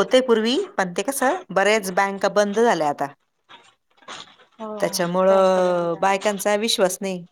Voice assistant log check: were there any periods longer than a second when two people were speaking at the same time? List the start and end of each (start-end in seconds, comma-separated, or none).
4.8-6.4